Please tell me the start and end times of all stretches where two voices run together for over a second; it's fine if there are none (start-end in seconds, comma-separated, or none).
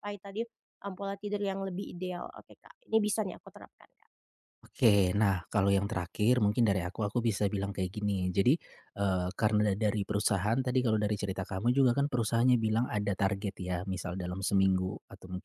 none